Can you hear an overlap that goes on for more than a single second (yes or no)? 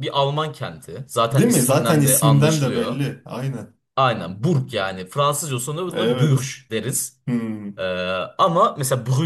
yes